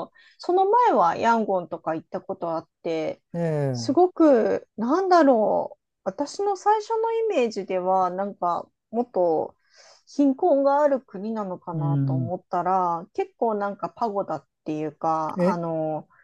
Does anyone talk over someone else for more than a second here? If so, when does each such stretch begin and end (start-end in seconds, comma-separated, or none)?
none